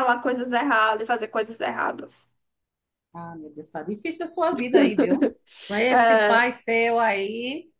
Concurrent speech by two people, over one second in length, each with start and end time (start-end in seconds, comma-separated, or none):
none